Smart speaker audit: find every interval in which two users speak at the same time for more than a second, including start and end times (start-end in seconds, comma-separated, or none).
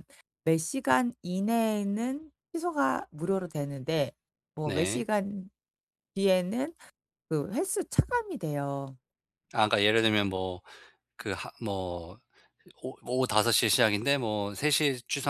none